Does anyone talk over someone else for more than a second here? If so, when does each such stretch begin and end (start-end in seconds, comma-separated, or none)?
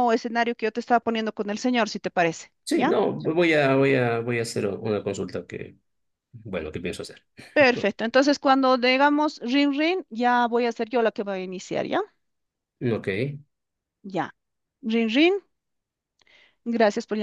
none